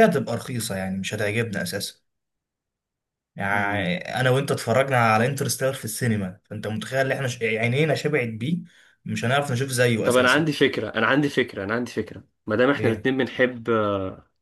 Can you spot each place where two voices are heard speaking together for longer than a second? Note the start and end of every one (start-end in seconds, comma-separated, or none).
none